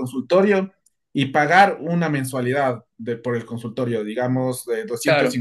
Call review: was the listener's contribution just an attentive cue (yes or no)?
yes